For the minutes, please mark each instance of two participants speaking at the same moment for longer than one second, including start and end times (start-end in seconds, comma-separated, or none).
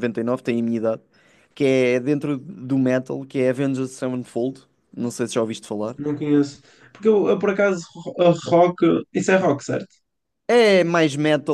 none